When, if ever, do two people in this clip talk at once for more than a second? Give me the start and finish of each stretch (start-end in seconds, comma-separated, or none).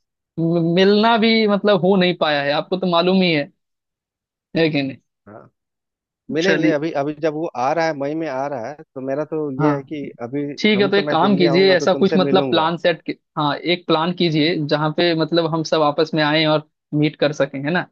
10.6-12.7